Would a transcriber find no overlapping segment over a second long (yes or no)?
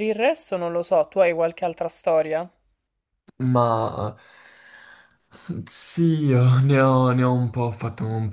yes